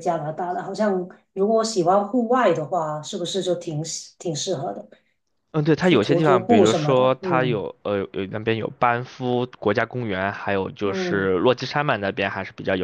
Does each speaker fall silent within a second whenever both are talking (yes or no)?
no